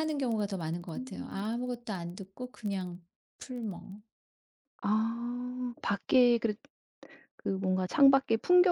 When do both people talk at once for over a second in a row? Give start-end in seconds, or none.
none